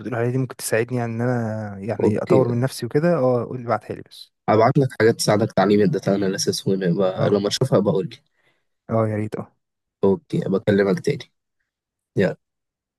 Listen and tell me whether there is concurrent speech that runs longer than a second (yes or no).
no